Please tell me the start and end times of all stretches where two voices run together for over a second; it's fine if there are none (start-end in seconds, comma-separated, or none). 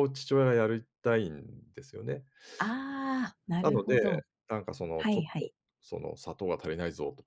none